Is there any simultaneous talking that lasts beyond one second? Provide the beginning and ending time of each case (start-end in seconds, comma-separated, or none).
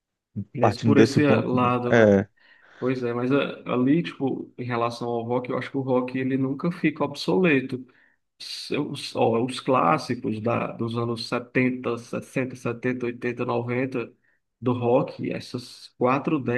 0.6-2.2